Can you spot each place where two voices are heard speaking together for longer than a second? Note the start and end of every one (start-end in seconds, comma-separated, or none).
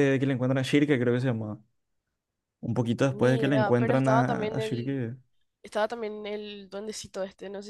3.1-5.0